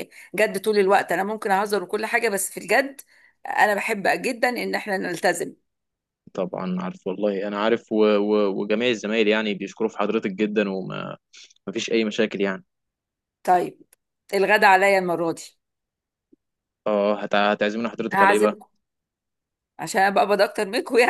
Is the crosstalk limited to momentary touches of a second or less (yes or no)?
yes